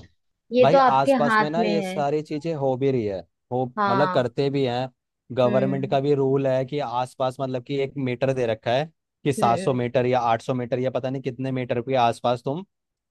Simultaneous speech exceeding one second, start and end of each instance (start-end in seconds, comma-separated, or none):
0.6-2.0